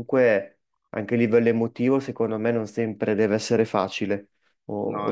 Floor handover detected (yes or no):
yes